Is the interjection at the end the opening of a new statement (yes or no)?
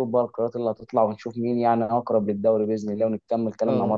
yes